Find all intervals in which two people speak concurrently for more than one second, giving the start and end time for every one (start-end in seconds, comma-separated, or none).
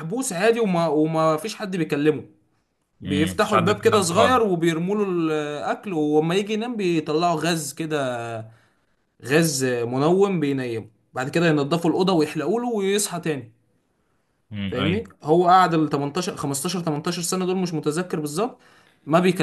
3.0-4.4